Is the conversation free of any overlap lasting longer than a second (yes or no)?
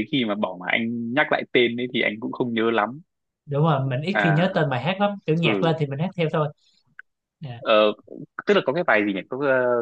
yes